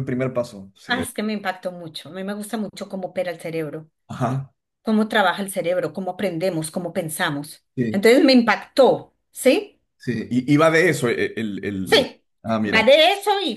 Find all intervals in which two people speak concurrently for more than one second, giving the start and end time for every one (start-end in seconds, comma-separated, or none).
none